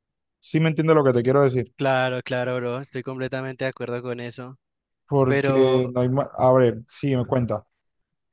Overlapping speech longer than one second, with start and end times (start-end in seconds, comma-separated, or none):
none